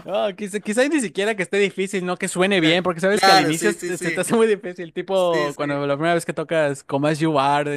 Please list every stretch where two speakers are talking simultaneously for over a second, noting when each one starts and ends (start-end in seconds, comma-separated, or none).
2.6-4.2